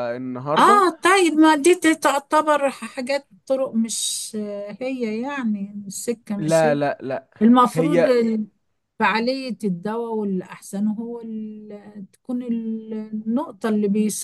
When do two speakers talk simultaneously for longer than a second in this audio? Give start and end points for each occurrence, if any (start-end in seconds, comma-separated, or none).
none